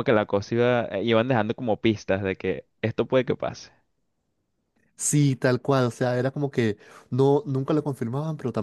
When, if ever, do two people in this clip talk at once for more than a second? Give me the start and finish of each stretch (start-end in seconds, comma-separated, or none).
none